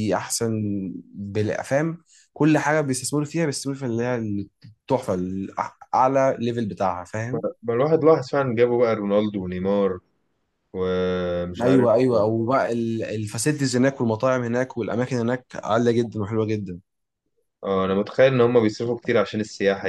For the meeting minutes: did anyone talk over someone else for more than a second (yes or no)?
no